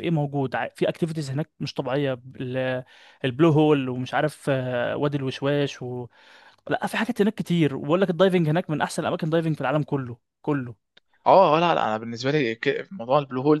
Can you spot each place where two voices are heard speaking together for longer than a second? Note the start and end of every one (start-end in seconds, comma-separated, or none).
none